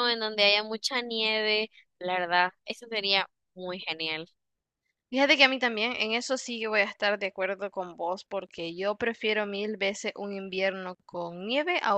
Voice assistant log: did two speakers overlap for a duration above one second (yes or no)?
no